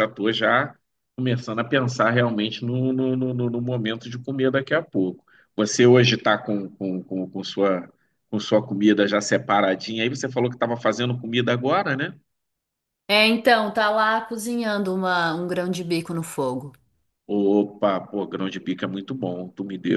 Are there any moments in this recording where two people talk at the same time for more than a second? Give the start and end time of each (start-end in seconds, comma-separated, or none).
none